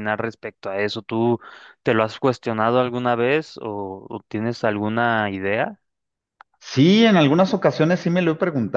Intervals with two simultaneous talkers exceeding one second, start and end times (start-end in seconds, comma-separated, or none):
none